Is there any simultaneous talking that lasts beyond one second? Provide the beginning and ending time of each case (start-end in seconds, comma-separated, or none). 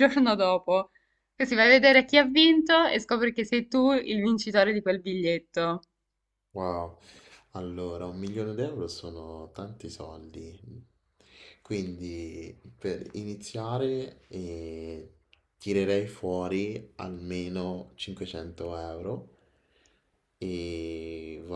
none